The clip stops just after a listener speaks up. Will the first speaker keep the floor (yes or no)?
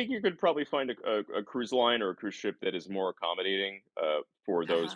no